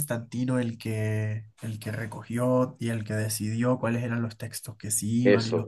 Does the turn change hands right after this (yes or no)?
yes